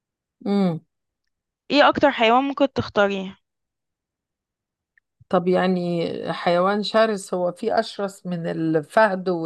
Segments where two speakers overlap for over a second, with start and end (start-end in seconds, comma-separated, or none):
none